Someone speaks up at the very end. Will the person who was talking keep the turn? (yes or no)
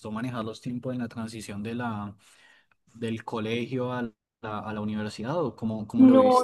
no